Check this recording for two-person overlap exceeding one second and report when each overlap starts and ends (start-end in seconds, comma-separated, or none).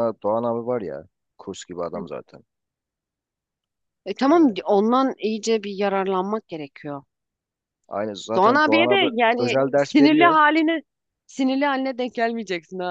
8.3-10.4